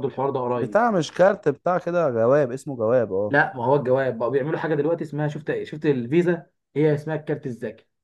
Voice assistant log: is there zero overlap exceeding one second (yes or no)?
yes